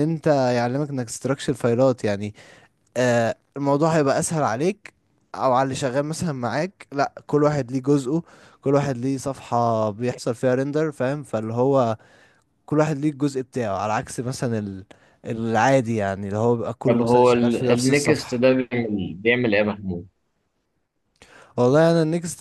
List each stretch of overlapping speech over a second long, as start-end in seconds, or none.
16.9-18.4